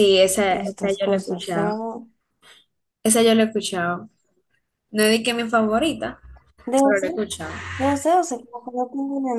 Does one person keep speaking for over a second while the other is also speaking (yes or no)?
yes